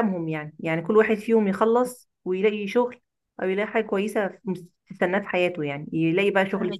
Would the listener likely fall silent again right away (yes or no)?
yes